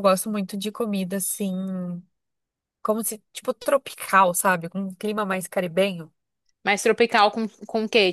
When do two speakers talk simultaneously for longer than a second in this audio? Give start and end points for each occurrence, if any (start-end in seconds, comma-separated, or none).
none